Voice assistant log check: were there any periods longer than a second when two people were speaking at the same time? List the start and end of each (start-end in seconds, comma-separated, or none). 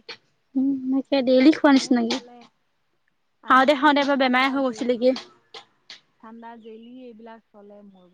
3.5-5.0